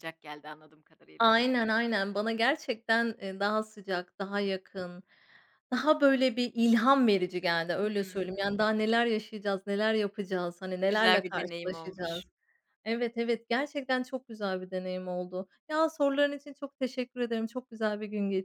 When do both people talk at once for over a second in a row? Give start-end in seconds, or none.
10.9-12.2